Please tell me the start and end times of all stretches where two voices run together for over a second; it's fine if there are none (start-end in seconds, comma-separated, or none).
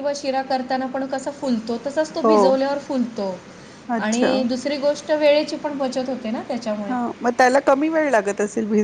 none